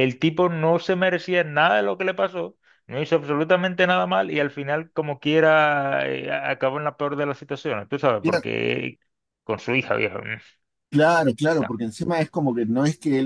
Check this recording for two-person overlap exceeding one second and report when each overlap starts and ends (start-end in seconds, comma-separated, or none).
none